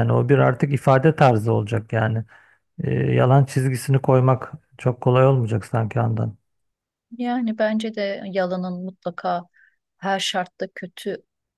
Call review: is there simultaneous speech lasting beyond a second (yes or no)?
no